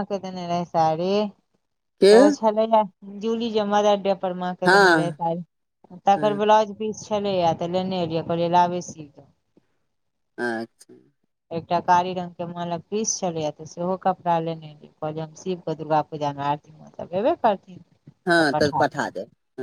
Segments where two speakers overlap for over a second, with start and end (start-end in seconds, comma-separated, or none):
none